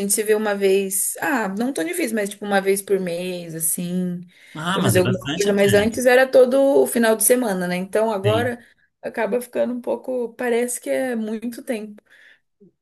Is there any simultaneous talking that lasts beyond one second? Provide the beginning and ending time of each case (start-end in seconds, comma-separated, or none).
4.7-6.0